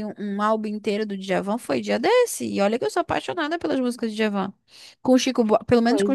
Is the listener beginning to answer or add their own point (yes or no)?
no